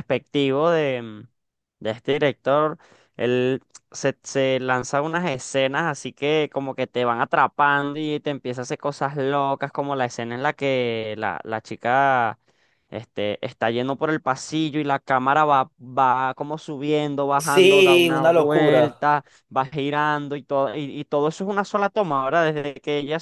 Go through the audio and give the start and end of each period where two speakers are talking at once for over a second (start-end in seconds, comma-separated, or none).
17.4-19.0